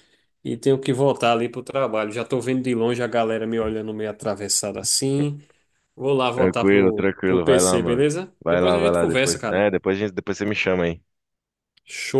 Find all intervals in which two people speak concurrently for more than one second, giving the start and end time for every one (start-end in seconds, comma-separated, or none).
6.3-9.7